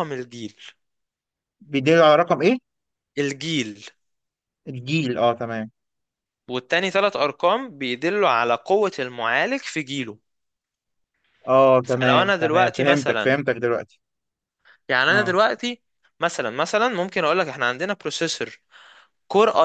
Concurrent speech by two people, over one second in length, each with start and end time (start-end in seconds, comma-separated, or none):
11.8-13.4